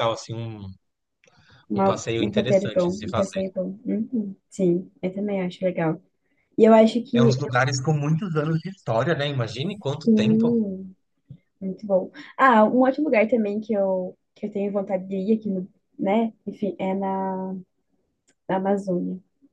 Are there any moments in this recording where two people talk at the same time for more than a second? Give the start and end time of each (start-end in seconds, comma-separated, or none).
1.8-3.4